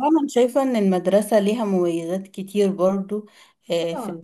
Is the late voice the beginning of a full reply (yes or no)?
no